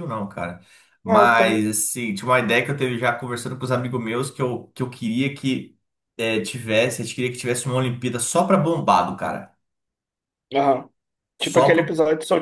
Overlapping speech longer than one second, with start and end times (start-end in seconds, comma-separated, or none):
none